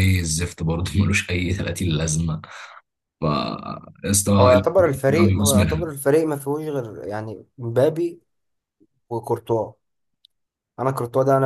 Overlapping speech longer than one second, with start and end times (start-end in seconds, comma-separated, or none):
4.4-5.9